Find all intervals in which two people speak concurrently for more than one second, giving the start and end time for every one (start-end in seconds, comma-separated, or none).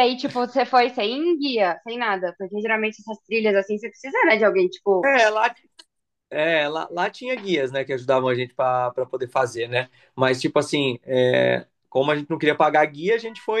none